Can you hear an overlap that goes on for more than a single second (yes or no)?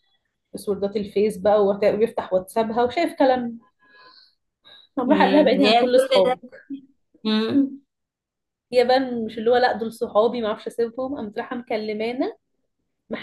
yes